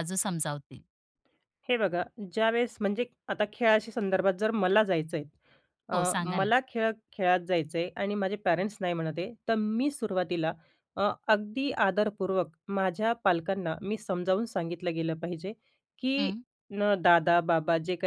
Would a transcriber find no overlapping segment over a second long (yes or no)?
yes